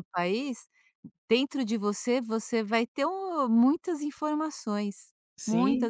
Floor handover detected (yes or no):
no